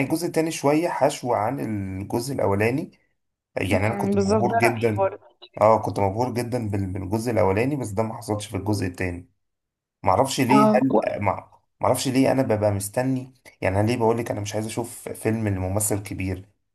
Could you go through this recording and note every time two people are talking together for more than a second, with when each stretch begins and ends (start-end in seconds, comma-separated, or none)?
3.7-5.1